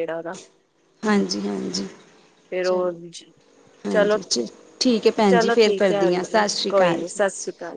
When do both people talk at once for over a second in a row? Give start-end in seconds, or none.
5.3-7.2